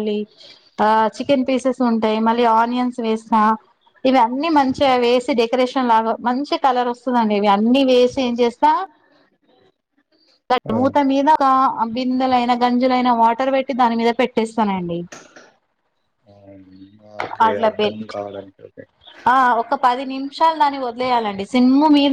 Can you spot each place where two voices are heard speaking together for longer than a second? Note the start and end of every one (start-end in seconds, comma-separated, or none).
none